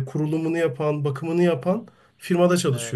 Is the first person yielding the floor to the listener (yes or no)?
yes